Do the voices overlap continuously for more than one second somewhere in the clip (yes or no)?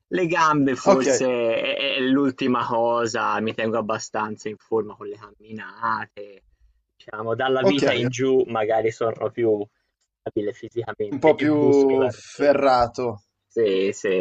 yes